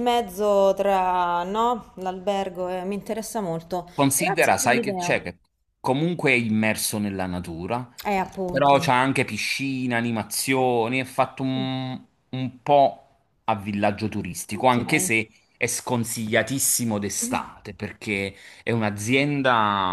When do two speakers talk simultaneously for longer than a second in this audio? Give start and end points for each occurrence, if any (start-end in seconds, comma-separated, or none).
3.9-5.2